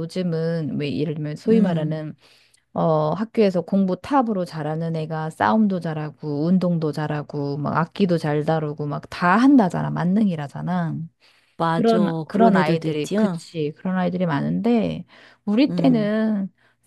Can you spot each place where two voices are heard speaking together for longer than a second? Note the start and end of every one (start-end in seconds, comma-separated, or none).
11.7-13.4